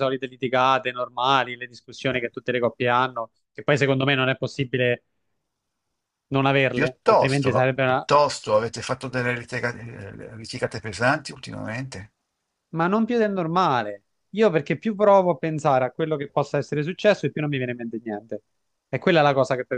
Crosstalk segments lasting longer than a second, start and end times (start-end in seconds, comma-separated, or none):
6.7-8.1